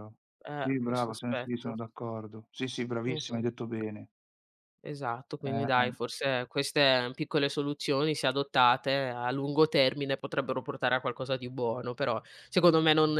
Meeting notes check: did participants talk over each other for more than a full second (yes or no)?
yes